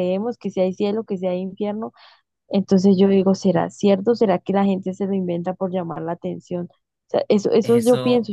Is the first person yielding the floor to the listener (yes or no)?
yes